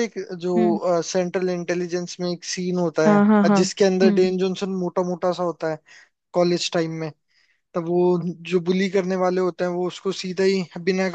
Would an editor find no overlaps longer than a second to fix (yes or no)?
no